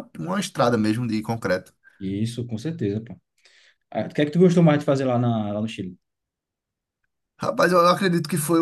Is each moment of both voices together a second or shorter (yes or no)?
yes